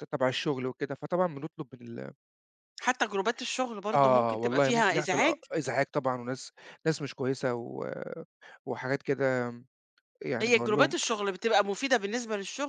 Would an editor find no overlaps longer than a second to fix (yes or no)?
no